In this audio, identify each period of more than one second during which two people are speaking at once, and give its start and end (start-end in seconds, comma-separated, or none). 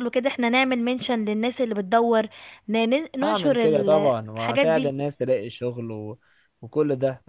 3.2-4.9